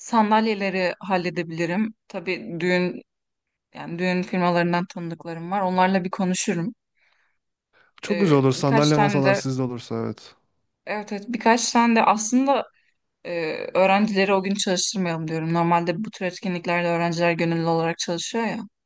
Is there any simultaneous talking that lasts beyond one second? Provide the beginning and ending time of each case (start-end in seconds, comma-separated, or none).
8.1-9.4